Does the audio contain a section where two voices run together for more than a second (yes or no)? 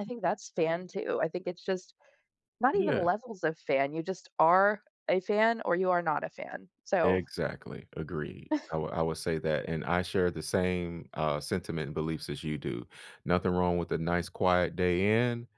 no